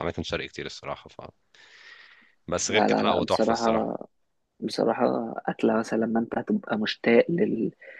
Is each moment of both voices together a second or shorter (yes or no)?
no